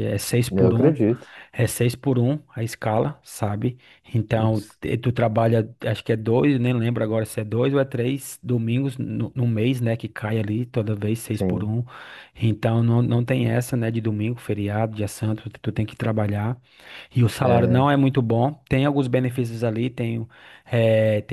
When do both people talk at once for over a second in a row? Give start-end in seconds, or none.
none